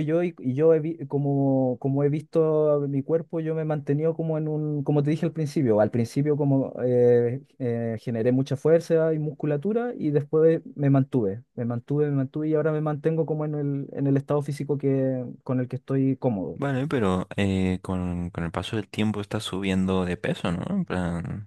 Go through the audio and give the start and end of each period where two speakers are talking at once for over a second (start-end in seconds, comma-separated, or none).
none